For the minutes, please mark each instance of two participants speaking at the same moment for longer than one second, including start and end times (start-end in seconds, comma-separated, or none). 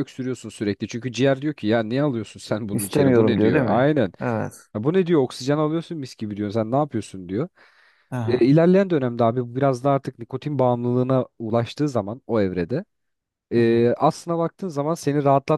2.7-4.1